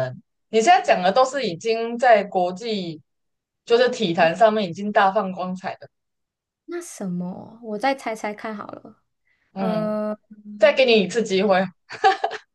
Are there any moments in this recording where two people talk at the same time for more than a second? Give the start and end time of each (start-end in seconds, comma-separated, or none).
none